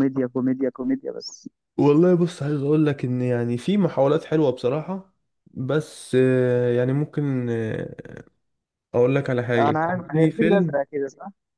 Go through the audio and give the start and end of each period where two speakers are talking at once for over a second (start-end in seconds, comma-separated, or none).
9.6-10.8